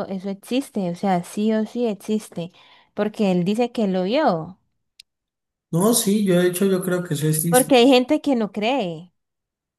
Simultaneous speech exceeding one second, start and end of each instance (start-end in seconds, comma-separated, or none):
none